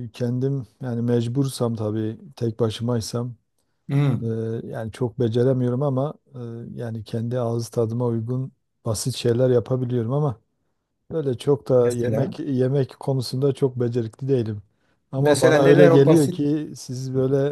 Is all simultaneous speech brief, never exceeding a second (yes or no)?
no